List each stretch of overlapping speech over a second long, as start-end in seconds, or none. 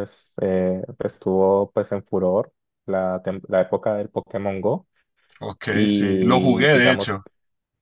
5.7-7.2